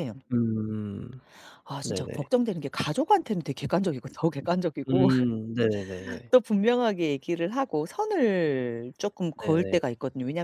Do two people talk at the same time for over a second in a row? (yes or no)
no